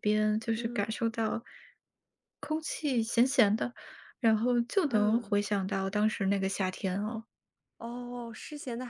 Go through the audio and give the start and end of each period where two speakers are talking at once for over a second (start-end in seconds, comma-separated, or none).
none